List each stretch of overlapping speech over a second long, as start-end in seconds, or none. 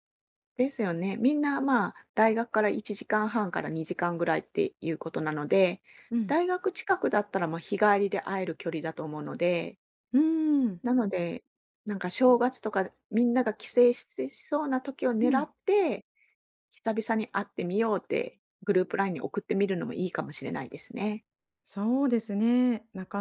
none